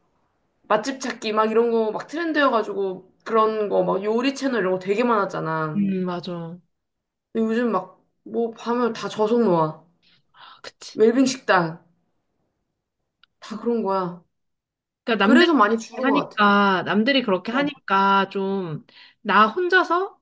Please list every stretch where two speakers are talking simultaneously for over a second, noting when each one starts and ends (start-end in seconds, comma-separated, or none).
15.2-16.4